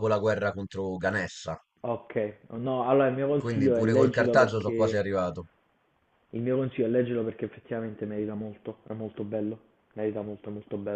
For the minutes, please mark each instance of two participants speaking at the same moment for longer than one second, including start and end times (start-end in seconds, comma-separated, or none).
3.4-5.0